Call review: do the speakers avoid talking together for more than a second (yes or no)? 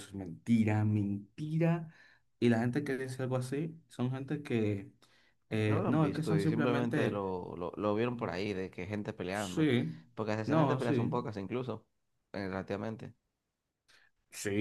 no